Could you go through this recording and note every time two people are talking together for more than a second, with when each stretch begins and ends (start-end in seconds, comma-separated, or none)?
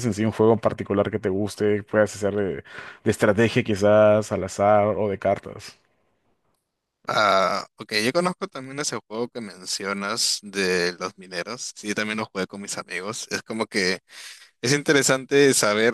none